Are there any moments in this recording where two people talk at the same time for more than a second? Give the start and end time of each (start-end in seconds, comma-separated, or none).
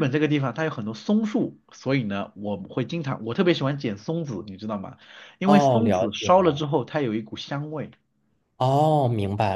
5.4-6.6